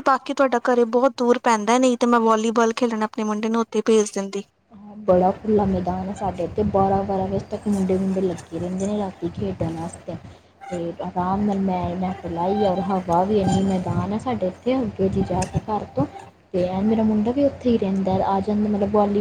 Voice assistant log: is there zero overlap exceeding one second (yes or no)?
yes